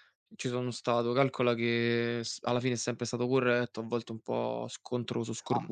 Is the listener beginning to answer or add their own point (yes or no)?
yes